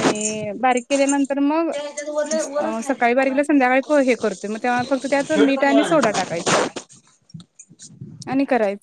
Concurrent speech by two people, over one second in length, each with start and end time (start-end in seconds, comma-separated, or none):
2.8-4.2